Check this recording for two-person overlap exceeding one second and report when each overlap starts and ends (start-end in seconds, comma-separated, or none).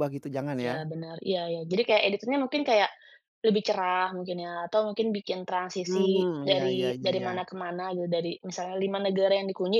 5.8-7.3